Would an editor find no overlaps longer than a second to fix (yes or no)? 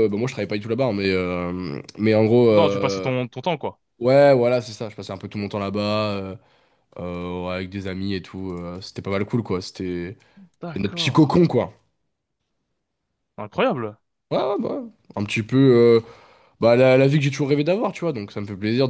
yes